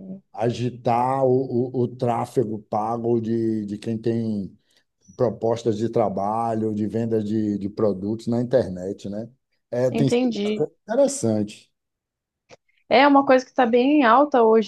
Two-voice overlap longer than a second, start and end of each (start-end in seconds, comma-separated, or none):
none